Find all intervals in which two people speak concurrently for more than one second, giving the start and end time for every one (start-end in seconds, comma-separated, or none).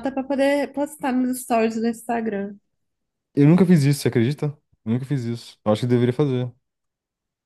none